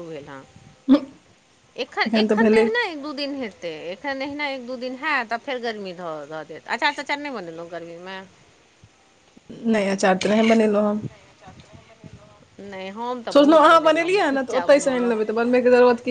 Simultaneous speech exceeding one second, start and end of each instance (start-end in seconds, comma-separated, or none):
13.3-15.1